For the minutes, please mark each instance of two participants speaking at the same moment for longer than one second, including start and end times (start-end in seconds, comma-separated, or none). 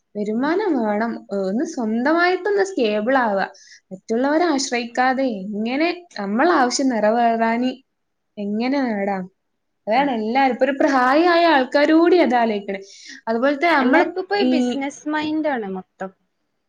none